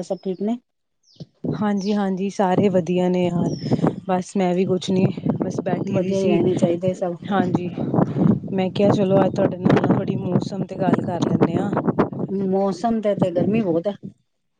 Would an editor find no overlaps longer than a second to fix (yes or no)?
yes